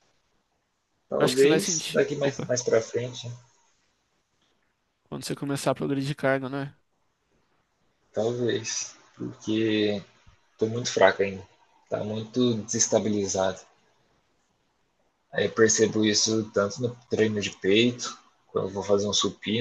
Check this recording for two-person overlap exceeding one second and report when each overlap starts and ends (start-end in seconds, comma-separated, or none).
1.2-2.5